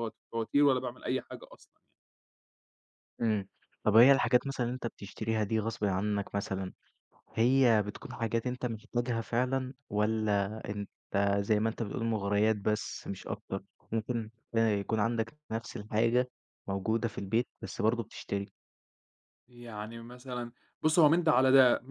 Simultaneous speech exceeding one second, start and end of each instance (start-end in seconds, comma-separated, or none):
none